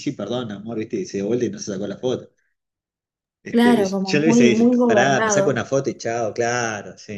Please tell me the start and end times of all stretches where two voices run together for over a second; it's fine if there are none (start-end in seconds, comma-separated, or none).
3.5-5.6